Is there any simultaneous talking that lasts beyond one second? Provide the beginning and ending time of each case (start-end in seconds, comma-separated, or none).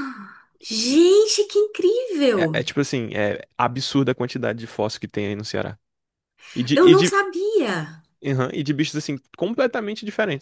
none